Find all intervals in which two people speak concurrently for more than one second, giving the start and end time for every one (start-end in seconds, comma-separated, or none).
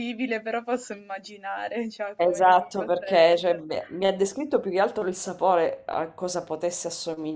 2.1-3.6